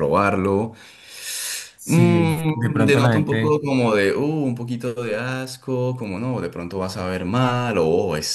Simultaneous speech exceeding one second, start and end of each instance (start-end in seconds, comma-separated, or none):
1.8-3.6